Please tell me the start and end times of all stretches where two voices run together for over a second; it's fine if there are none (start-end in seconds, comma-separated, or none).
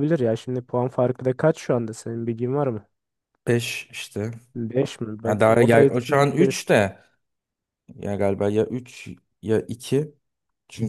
5.2-6.7